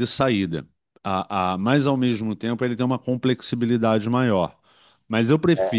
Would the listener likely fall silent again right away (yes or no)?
yes